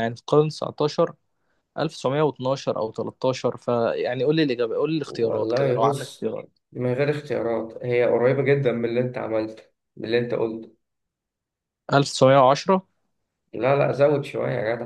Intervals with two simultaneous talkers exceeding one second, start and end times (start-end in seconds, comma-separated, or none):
5.1-6.3